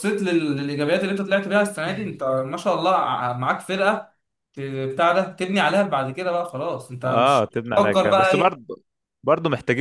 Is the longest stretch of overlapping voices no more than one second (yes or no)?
no